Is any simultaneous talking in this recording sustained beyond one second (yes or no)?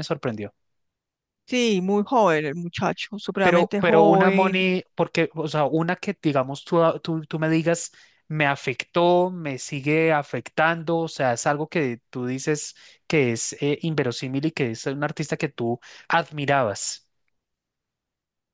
yes